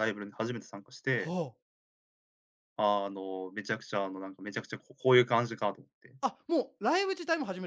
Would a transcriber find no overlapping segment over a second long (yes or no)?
yes